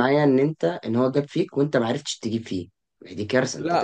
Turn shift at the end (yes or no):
yes